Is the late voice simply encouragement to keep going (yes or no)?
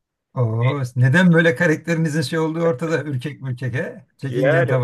no